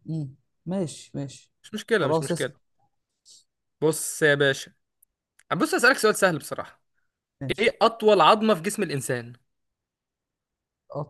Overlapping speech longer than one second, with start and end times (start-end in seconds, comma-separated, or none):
none